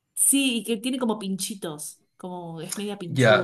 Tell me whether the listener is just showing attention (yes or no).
no